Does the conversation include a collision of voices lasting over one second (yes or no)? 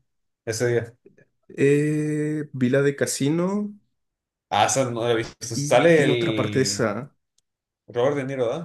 yes